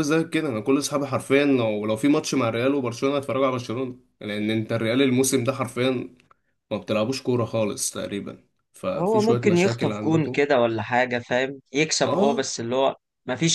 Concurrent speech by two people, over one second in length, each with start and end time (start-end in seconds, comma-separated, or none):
9.0-10.4